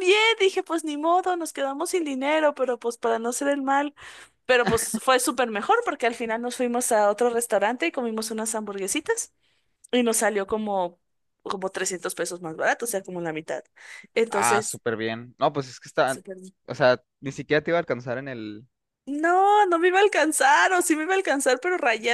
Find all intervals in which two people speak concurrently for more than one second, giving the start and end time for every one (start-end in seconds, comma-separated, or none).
none